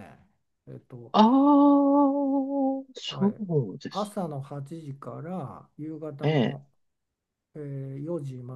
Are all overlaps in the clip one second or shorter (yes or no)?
yes